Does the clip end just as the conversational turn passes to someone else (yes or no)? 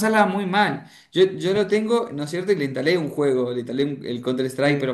no